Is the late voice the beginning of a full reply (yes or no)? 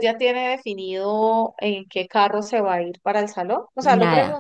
no